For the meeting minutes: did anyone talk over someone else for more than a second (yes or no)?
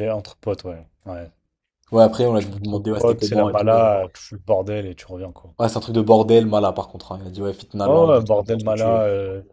yes